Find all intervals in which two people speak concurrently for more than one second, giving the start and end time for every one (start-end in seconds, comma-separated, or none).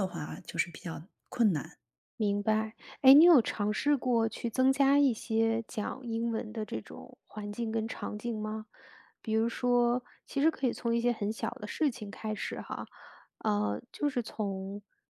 none